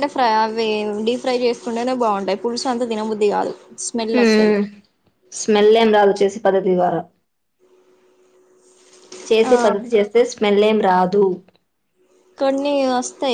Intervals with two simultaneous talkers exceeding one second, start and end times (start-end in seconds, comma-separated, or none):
none